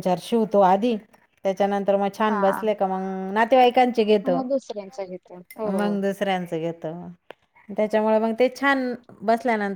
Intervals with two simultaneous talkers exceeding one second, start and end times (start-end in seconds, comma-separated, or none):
none